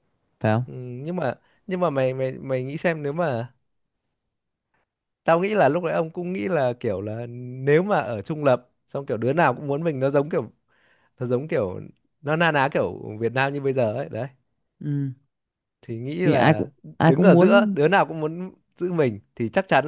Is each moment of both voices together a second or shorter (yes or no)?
no